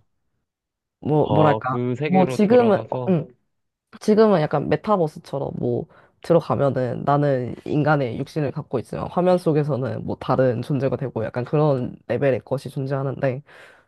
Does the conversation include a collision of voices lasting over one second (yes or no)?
yes